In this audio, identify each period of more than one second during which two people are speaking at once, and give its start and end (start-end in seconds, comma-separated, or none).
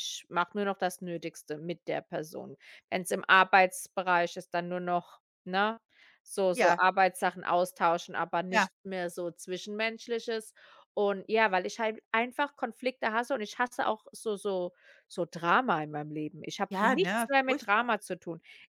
16.7-17.9